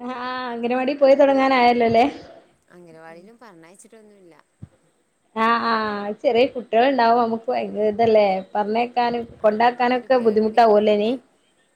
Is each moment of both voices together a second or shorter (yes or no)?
no